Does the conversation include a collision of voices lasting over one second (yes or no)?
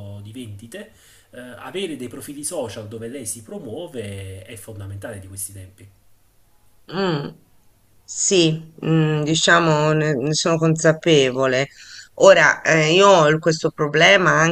no